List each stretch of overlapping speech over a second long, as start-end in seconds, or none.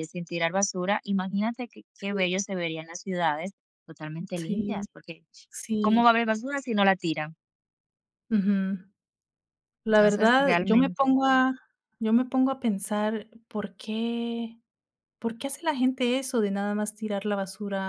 9.9-11.2